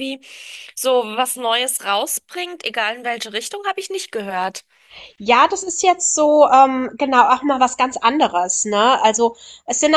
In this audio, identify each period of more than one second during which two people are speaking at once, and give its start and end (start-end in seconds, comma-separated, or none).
none